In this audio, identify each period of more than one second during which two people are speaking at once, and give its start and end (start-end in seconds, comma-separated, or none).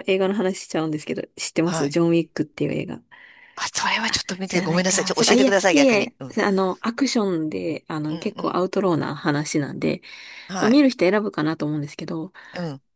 4.5-6.4